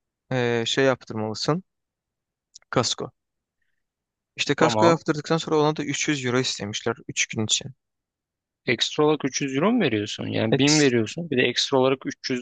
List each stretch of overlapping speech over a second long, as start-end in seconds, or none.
none